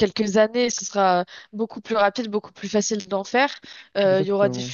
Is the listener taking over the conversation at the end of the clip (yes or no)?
no